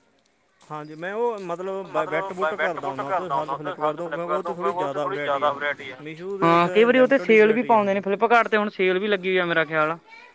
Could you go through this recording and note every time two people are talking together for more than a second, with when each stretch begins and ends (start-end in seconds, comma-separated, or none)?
6.4-8.0